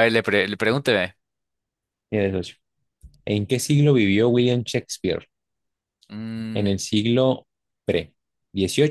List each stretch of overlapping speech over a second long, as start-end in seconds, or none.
none